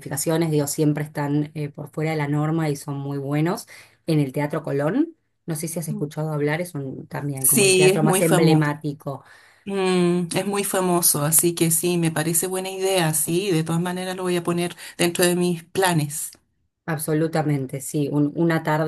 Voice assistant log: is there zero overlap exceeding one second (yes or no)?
no